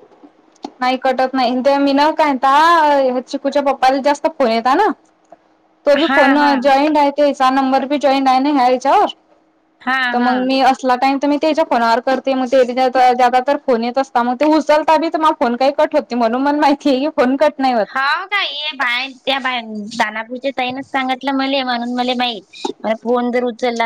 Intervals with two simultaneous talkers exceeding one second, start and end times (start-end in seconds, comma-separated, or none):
none